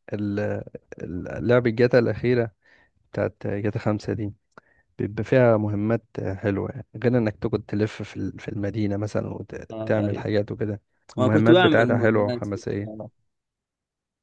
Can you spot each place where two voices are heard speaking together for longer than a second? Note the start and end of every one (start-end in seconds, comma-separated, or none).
11.2-13.0